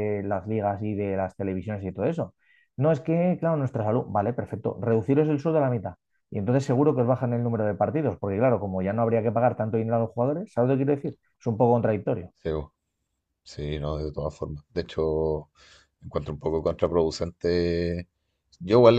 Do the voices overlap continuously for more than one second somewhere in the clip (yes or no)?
no